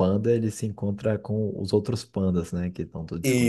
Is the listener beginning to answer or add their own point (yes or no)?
yes